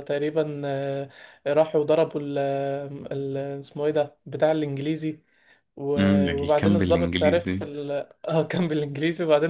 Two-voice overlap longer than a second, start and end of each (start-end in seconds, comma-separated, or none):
6.0-7.7